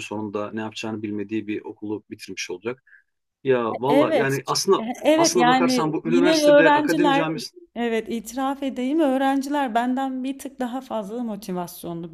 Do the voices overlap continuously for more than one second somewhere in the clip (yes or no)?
yes